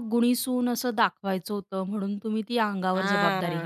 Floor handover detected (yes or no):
yes